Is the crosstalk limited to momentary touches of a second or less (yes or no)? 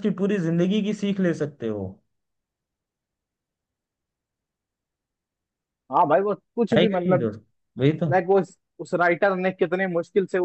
yes